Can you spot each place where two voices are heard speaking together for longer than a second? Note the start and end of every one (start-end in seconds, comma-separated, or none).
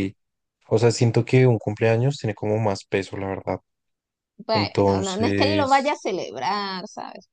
4.5-6.0